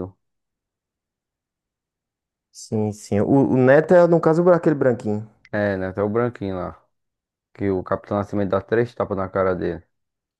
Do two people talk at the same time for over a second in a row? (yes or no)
no